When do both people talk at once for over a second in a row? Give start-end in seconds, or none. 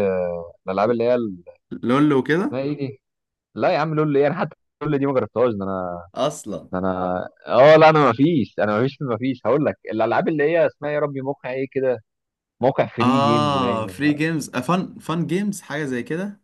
13.0-14.2